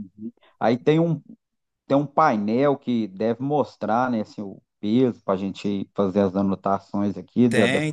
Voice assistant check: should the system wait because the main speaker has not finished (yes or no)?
no